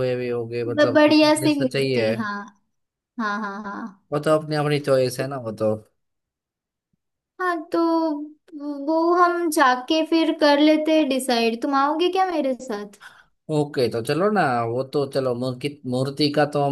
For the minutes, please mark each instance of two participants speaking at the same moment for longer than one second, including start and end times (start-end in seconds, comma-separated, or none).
0.8-2.1